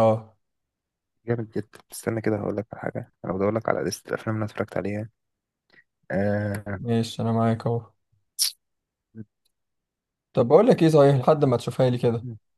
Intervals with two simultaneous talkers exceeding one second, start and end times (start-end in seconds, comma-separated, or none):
none